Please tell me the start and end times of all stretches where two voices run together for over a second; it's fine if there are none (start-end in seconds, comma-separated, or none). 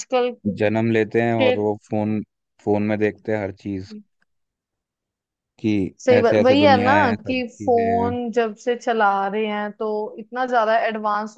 6.0-8.1